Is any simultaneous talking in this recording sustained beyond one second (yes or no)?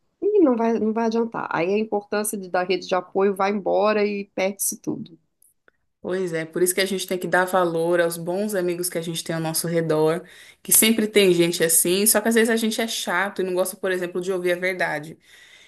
no